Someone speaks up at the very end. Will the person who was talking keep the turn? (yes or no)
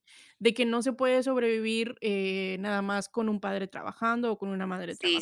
no